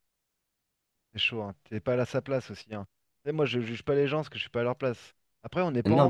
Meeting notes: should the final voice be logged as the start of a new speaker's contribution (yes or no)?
yes